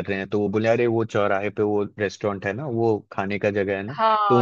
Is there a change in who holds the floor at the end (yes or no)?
yes